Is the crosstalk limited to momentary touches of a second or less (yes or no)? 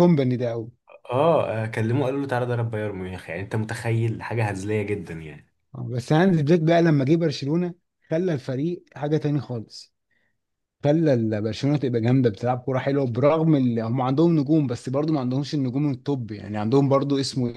yes